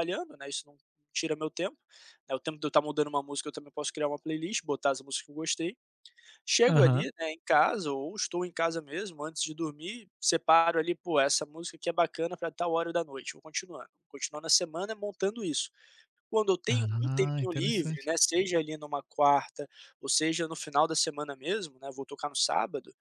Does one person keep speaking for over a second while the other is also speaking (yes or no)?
yes